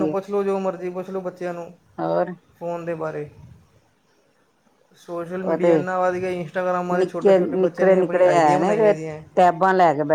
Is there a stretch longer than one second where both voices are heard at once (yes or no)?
yes